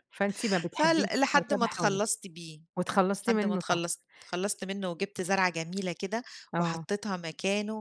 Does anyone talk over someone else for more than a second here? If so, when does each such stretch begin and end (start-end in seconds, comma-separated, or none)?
0.7-2.0